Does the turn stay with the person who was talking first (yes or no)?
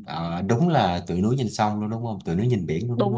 no